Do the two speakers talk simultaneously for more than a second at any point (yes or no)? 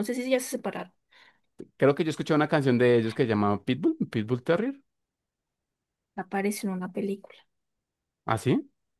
no